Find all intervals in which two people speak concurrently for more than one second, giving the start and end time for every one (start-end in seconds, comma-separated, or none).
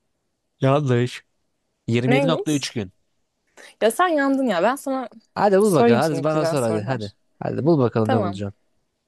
5.6-7.1